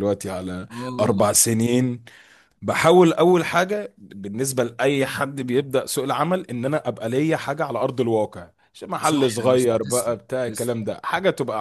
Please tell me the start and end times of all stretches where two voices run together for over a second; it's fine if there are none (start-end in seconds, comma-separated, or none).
9.0-10.8